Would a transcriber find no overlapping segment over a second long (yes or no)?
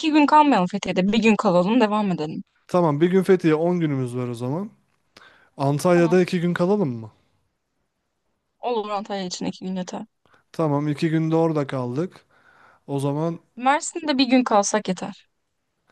yes